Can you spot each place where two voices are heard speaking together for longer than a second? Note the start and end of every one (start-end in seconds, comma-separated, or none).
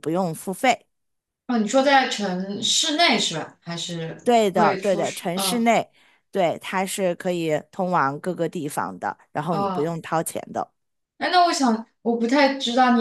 4.2-5.6